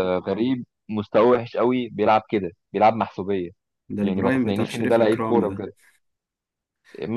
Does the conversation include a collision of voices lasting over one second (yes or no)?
yes